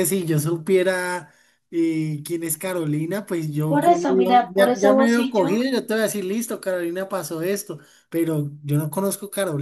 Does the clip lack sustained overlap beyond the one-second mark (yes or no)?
no